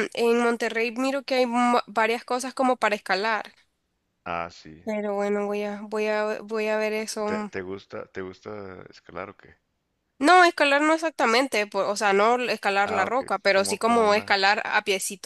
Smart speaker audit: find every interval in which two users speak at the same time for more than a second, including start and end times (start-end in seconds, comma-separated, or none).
12.8-14.4